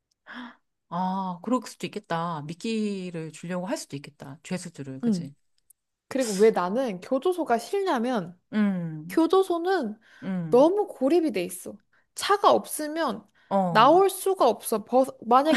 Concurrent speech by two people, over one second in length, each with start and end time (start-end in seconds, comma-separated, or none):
none